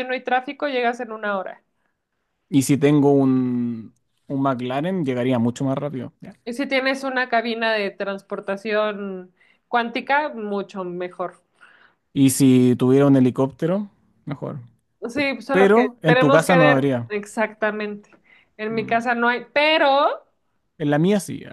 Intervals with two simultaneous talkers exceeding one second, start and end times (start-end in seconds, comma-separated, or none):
15.5-17.1